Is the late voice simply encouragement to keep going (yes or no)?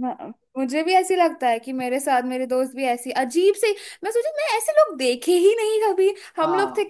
yes